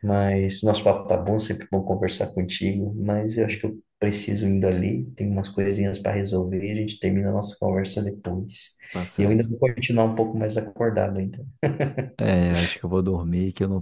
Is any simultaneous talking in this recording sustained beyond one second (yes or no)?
no